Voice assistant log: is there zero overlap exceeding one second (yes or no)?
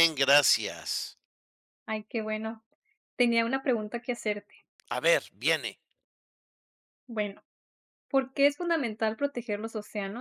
yes